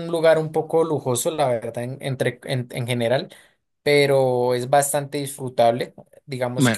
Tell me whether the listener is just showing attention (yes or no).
yes